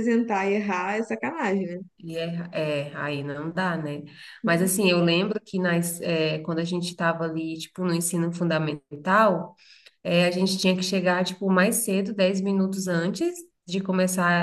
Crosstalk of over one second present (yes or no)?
no